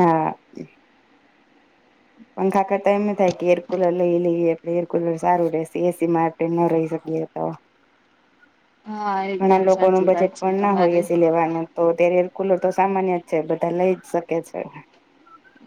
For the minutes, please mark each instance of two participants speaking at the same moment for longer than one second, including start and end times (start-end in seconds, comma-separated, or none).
9.4-11.0